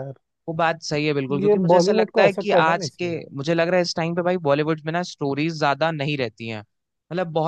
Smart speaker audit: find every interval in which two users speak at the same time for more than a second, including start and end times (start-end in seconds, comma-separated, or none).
1.4-3.2